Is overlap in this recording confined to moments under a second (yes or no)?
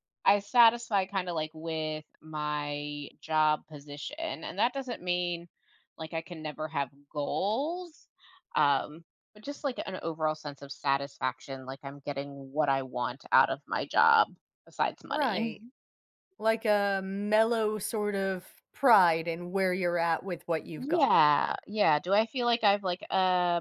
yes